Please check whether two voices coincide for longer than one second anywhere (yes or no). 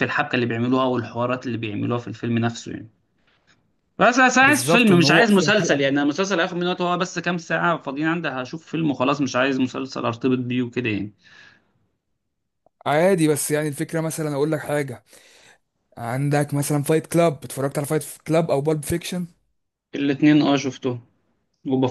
yes